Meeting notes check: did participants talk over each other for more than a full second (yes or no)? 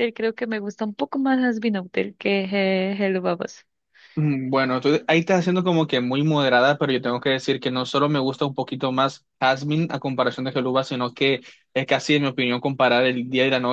no